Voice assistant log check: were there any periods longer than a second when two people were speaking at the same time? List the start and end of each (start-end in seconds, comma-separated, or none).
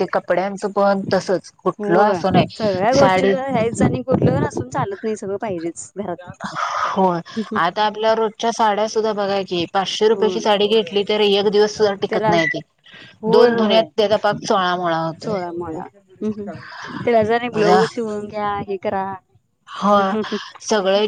none